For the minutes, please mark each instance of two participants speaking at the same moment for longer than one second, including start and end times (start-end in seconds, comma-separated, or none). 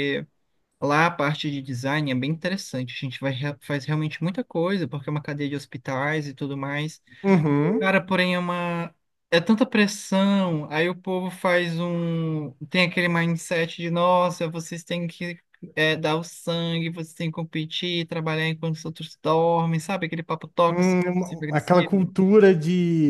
20.7-22.2